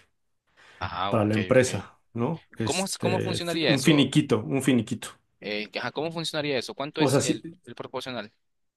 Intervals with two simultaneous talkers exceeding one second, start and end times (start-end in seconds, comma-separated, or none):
2.6-4.1